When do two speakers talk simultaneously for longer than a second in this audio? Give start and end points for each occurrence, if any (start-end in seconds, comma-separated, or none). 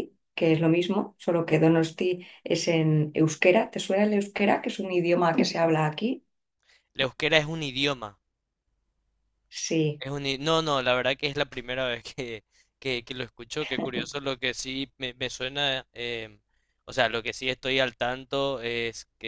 none